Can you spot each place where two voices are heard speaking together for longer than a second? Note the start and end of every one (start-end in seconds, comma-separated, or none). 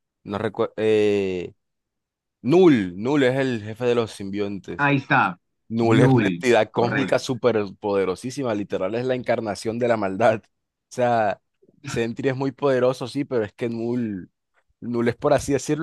5.8-7.2